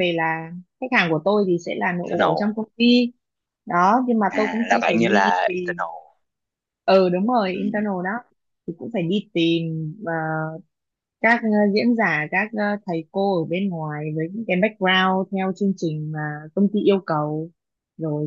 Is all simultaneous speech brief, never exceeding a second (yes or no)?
no